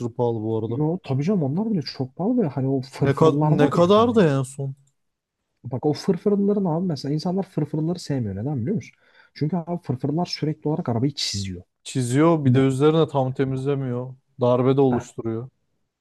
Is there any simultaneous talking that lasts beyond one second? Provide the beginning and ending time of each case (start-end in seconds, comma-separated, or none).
3.0-4.2